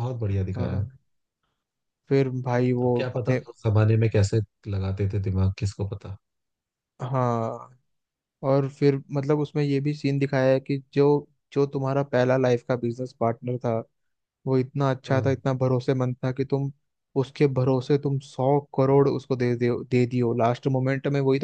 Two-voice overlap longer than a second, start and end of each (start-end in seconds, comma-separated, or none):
none